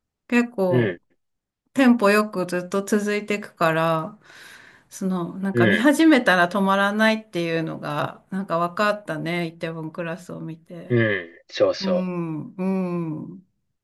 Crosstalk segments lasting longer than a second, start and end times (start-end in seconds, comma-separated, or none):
none